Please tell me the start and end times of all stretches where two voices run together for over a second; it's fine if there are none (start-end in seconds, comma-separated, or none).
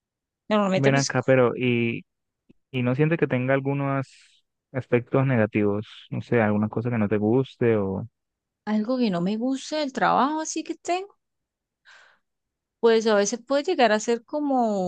none